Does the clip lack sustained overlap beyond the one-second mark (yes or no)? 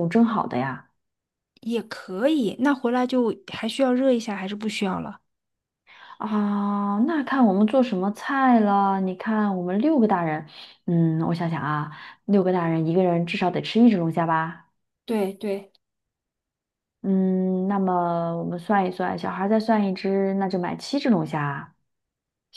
yes